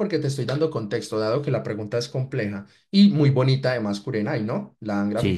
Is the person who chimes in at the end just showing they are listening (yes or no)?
no